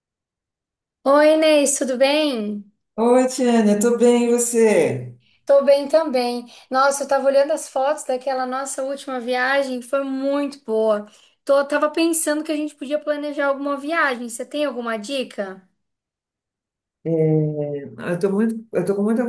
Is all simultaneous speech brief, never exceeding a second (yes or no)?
yes